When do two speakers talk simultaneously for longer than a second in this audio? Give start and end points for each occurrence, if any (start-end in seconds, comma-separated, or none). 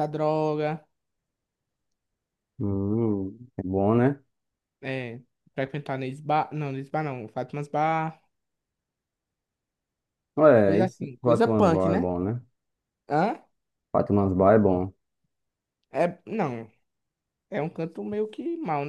10.6-12.1